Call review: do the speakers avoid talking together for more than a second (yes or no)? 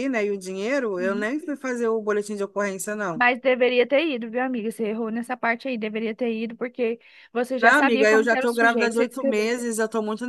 no